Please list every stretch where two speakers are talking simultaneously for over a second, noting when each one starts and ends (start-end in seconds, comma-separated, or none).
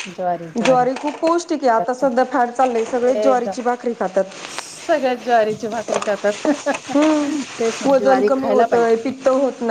7.6-9.1